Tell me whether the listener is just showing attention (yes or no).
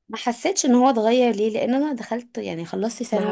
no